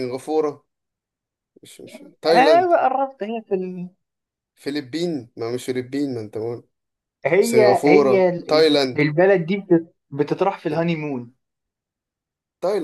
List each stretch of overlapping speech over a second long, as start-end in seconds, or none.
7.4-9.0